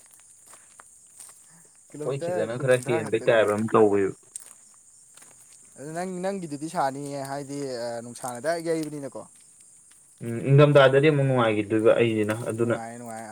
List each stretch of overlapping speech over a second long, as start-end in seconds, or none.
1.9-3.5